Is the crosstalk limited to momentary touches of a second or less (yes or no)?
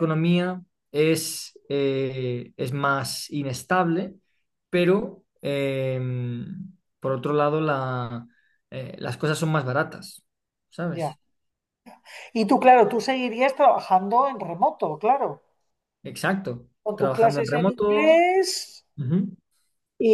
no